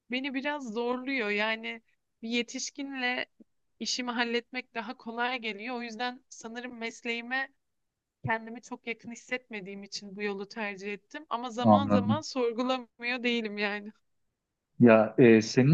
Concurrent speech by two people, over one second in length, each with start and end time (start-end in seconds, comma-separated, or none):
none